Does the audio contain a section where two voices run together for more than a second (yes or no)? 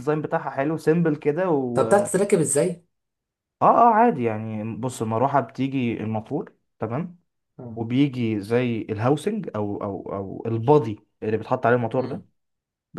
no